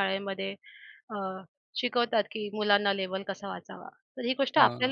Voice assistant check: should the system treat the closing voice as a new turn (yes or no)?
no